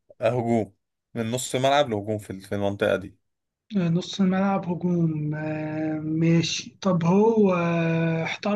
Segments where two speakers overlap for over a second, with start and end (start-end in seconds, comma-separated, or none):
none